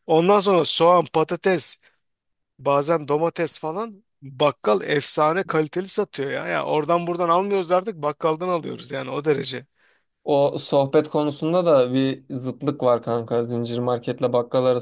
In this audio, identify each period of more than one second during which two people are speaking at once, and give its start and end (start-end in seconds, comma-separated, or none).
none